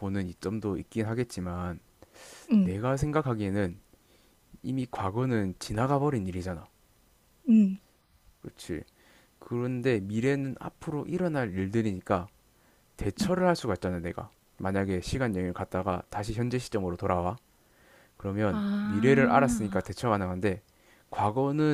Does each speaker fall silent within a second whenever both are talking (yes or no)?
no